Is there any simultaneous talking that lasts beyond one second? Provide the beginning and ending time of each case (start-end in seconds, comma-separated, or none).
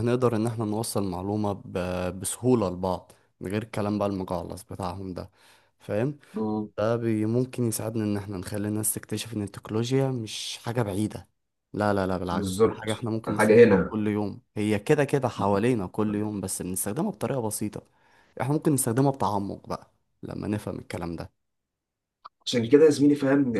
12.3-14.0